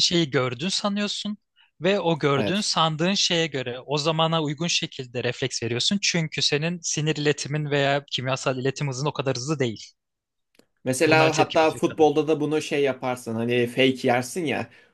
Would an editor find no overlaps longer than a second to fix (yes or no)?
no